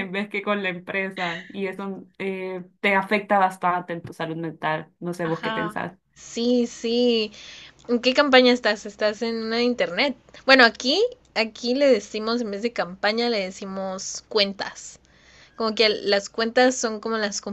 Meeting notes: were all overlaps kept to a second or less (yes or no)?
yes